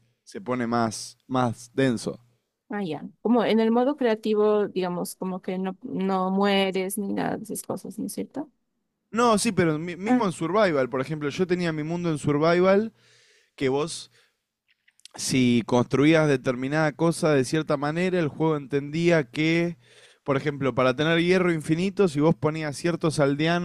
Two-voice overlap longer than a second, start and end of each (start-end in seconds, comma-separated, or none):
none